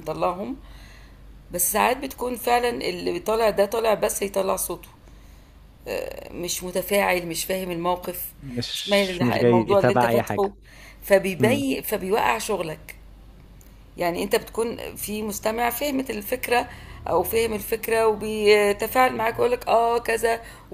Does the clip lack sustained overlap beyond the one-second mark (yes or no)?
no